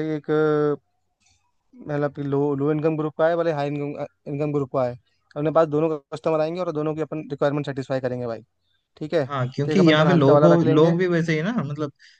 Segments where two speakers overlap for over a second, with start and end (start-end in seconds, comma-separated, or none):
9.7-10.9